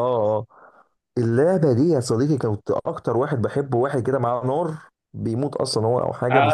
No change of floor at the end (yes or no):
no